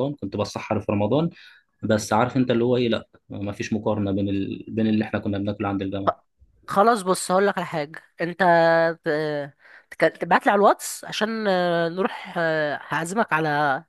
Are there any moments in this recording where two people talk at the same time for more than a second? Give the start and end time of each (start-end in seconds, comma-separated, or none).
none